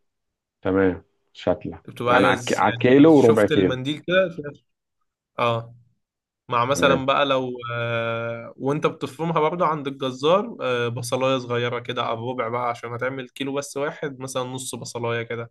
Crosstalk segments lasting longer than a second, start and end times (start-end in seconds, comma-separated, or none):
1.9-3.8